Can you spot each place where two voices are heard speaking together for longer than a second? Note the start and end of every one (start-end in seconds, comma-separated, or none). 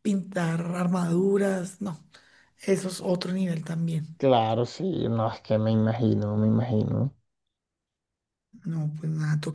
none